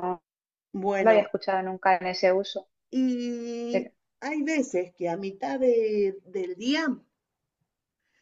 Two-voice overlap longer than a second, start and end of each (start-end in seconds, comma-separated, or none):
none